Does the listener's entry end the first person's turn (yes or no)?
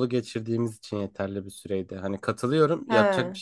no